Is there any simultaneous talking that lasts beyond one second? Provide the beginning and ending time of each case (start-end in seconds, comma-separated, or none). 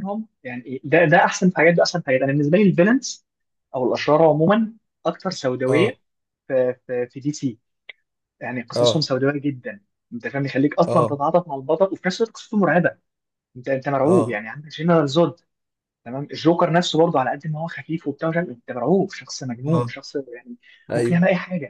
none